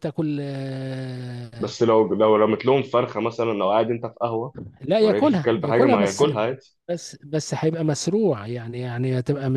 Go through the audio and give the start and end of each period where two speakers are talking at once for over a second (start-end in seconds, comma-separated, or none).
5.0-6.3